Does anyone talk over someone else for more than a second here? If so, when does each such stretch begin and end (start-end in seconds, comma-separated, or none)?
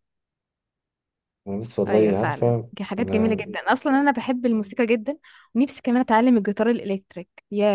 1.9-3.5